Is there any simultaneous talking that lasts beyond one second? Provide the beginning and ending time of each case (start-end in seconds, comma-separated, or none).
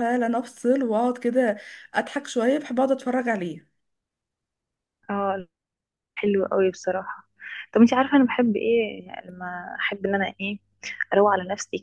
none